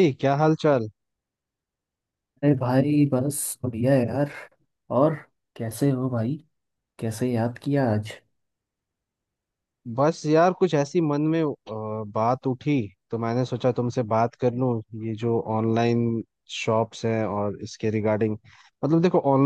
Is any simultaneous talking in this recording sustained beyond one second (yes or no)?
no